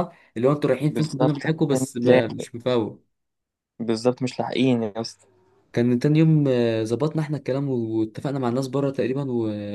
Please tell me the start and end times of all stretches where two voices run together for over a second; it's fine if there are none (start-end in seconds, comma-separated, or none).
0.9-2.5